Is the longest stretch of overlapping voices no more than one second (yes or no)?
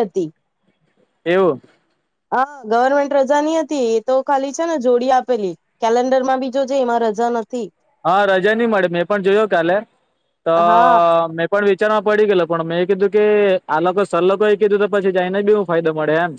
yes